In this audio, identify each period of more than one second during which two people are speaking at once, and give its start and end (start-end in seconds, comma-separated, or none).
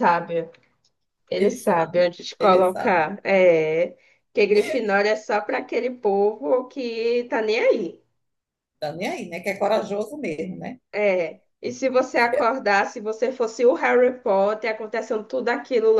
1.4-3.1